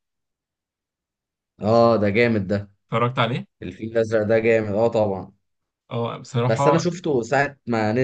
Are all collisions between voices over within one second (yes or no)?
yes